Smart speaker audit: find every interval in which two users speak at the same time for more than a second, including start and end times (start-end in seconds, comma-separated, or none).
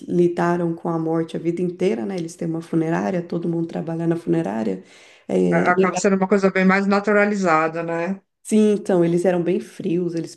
none